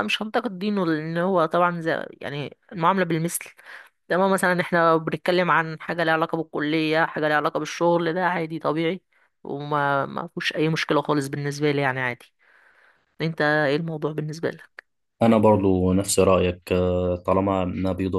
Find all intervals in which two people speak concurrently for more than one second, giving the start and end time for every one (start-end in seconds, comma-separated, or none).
none